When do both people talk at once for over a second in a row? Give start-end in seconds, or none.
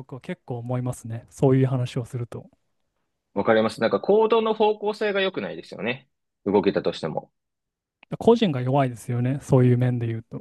none